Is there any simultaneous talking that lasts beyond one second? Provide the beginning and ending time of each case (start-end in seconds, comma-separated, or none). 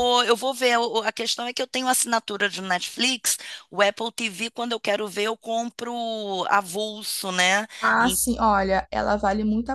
none